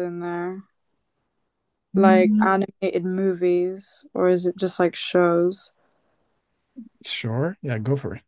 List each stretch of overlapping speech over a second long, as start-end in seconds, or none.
none